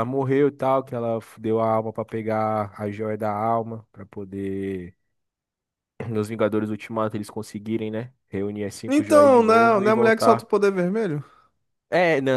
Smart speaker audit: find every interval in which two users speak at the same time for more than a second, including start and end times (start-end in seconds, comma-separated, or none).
8.9-10.4